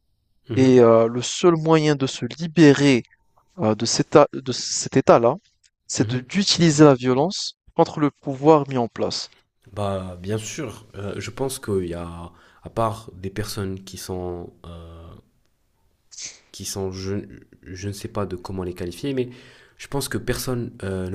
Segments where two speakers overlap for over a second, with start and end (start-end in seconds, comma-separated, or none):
none